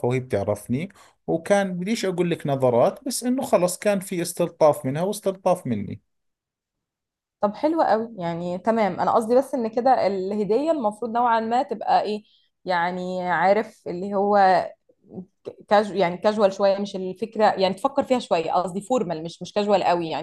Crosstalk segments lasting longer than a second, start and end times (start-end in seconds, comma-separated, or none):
none